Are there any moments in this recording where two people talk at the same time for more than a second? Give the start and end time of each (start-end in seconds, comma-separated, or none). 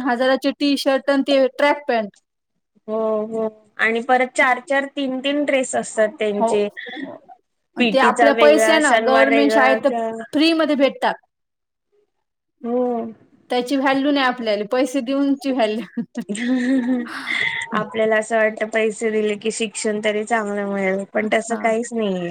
7.8-9.8